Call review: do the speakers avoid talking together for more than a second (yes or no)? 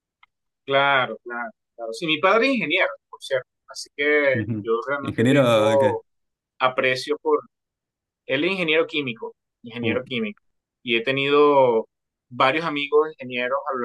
no